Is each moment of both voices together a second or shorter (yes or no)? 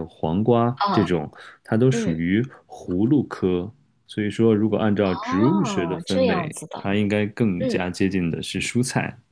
no